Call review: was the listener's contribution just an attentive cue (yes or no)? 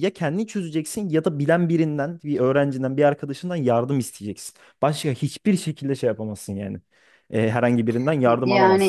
no